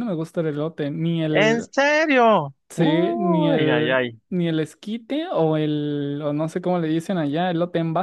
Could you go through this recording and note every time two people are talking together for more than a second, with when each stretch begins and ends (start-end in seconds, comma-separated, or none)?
2.7-4.2